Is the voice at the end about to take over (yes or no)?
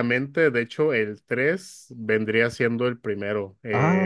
no